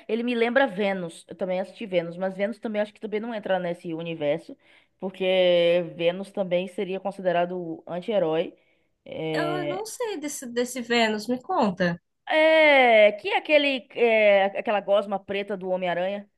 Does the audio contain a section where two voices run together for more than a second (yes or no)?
no